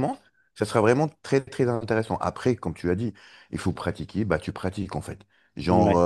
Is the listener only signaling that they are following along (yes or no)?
yes